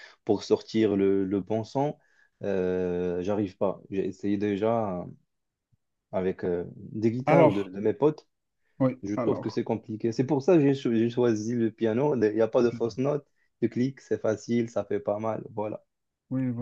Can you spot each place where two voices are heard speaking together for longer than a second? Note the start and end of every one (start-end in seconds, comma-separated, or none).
none